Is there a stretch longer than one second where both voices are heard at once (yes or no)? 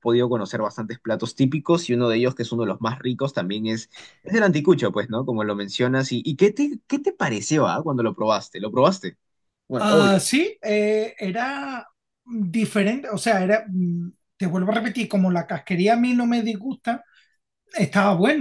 no